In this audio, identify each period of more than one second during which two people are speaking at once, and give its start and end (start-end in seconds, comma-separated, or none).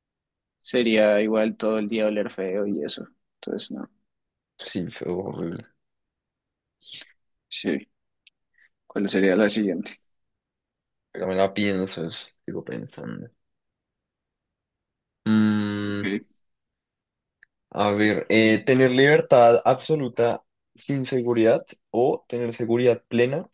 none